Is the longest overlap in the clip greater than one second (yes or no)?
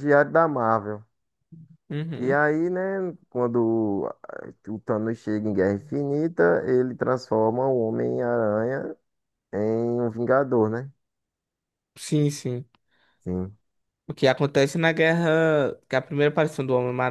no